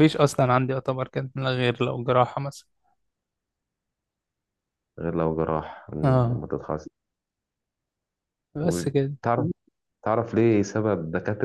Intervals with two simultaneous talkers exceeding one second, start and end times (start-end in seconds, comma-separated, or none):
none